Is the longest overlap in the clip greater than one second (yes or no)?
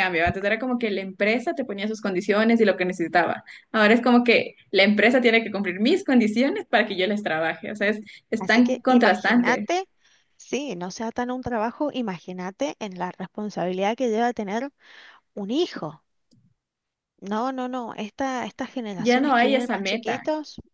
yes